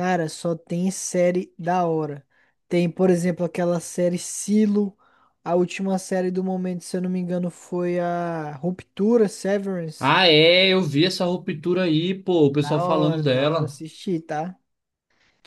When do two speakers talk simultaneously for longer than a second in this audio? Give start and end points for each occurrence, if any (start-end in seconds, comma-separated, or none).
12.5-13.8